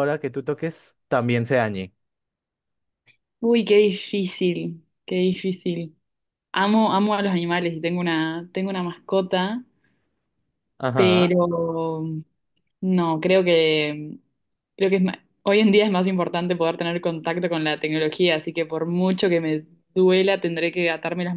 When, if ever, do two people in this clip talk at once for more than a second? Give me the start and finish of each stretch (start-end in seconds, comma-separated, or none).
none